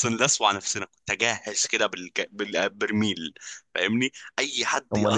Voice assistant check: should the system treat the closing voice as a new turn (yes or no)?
yes